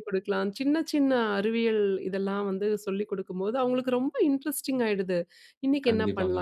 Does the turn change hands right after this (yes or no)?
no